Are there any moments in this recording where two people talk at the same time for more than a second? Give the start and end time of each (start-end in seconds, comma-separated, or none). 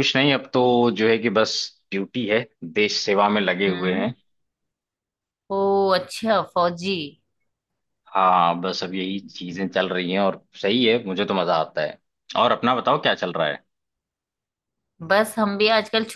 none